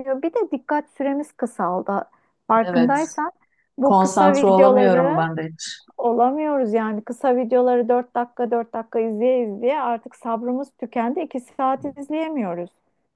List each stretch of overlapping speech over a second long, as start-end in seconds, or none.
3.8-5.3